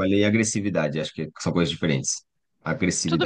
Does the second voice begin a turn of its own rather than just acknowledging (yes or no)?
yes